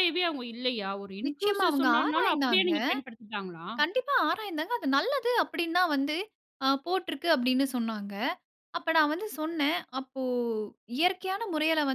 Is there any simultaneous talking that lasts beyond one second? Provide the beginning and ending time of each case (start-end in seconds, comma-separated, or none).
1.3-2.7